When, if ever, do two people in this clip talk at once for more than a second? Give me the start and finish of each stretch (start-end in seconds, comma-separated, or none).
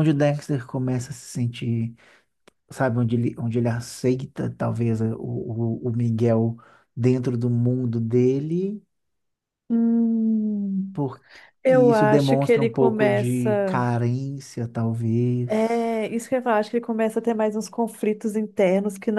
11.7-13.8